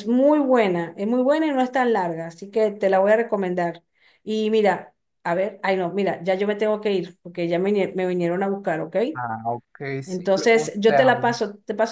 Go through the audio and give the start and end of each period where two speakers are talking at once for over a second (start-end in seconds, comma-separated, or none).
10.0-11.4